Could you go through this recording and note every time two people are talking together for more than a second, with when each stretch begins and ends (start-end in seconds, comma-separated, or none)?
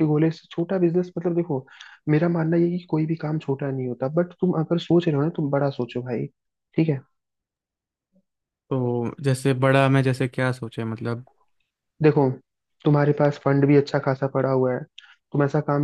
none